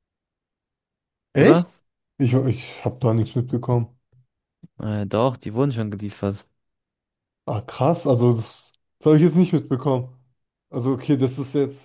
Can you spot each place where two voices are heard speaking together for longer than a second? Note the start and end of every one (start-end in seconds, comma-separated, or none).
none